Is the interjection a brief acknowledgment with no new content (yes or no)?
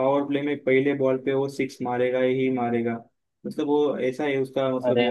yes